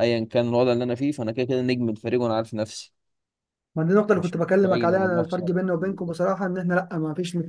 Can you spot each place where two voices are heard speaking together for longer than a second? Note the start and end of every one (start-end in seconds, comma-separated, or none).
4.1-6.2